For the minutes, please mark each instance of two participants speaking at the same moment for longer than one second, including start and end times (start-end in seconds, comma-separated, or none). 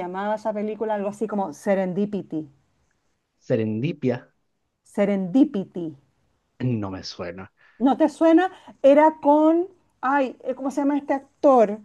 none